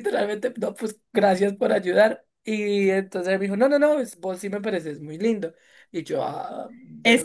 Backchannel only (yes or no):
no